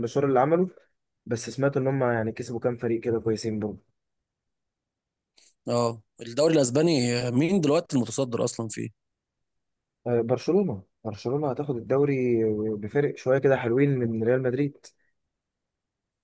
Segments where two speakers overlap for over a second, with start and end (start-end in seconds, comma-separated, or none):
none